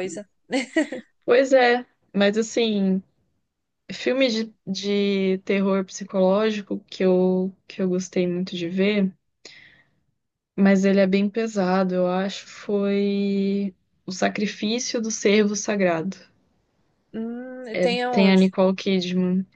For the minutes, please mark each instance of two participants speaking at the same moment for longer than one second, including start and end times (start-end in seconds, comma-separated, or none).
none